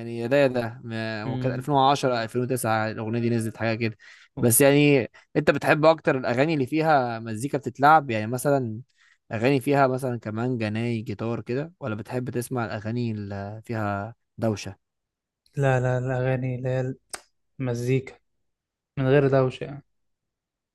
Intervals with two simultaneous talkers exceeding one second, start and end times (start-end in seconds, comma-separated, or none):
none